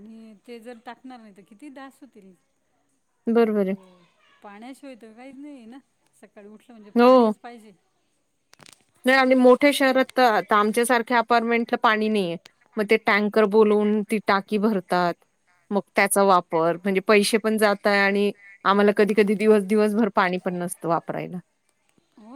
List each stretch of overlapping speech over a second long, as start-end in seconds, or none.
none